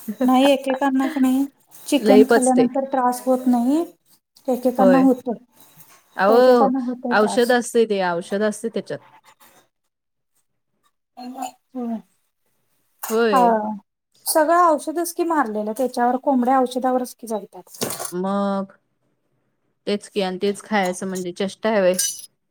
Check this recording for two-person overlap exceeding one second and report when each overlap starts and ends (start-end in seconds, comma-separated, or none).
none